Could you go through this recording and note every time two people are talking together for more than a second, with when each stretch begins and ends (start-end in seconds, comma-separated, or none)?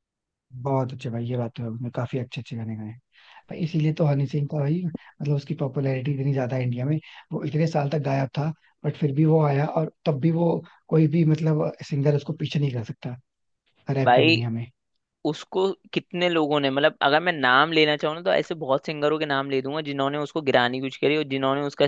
none